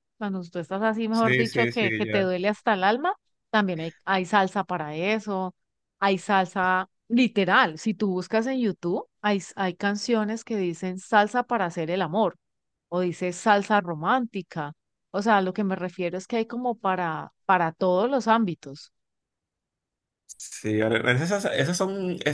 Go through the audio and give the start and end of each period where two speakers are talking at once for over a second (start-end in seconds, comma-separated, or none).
1.1-2.3